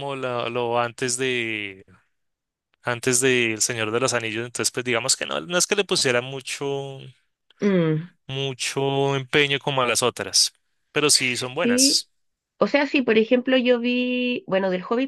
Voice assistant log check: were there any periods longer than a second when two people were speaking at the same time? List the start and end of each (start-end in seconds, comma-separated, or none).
none